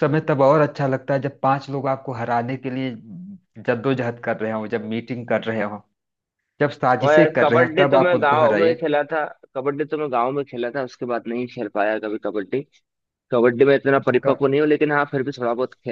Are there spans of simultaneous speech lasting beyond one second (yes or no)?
yes